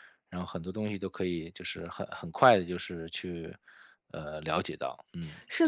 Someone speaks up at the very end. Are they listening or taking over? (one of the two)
taking over